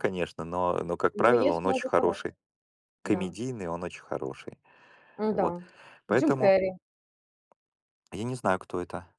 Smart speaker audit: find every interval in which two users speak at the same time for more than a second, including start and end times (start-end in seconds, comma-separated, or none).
1.1-2.4